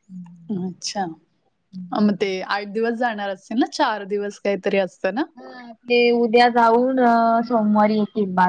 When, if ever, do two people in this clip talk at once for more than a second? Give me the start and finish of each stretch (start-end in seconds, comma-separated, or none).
none